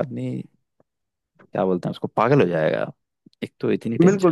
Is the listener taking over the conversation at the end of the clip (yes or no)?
yes